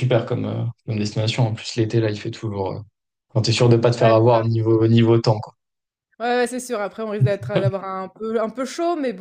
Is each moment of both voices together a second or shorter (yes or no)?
yes